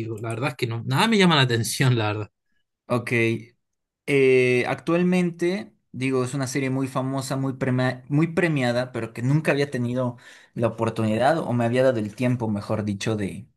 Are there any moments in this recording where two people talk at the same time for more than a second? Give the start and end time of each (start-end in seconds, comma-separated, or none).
none